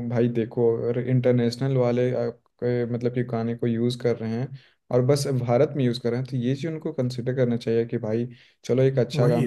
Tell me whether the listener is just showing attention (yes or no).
yes